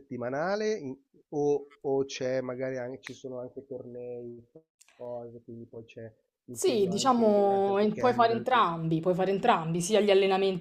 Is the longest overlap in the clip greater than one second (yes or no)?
yes